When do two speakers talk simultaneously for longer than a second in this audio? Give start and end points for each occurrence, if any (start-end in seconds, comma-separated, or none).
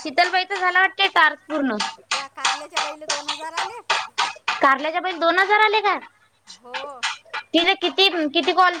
none